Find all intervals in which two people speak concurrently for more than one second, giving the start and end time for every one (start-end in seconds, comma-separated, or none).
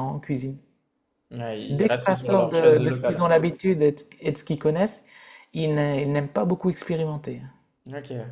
1.7-3.3